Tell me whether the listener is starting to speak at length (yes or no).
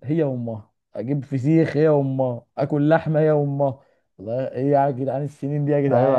yes